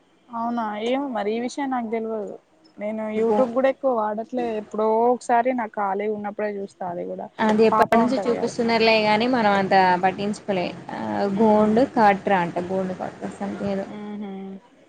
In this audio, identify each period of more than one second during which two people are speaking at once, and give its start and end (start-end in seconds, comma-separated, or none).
none